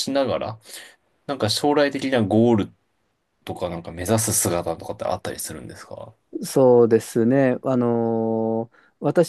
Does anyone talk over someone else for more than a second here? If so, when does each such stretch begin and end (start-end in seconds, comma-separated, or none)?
none